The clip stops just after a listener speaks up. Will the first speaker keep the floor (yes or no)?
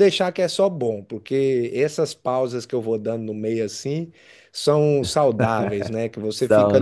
yes